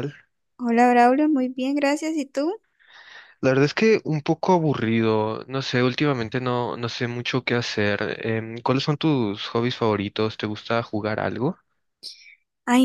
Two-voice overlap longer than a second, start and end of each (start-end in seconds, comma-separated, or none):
none